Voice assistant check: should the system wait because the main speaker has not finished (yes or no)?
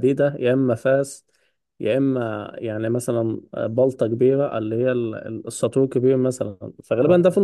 yes